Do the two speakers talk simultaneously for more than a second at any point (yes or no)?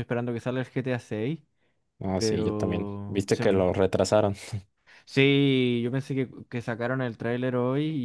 yes